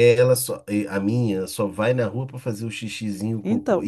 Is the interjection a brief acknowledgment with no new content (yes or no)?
yes